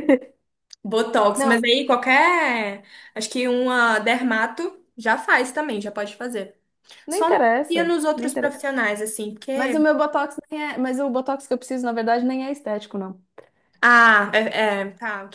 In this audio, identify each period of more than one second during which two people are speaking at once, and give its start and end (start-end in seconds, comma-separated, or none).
7.1-8.6